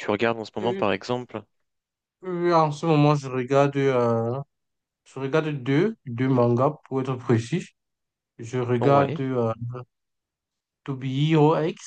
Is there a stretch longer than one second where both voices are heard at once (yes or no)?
no